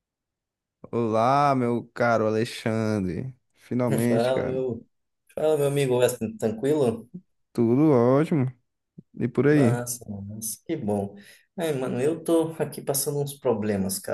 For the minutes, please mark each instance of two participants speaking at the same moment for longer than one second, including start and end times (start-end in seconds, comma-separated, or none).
none